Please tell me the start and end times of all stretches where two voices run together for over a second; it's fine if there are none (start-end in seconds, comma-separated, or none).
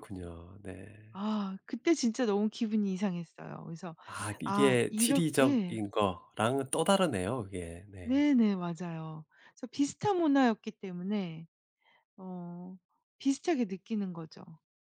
4.4-5.8